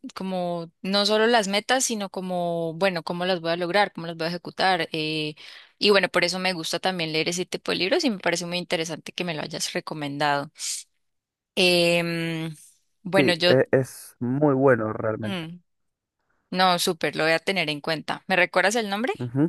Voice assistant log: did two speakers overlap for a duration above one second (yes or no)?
no